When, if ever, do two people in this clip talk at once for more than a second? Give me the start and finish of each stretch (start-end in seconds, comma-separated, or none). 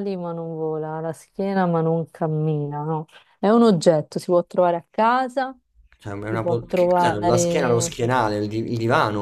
6.3-8.0